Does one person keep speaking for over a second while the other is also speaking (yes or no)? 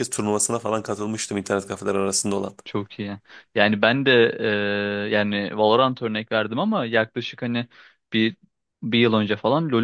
no